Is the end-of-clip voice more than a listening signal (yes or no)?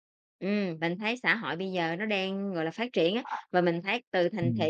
no